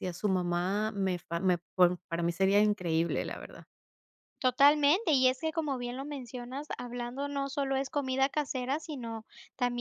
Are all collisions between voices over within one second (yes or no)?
yes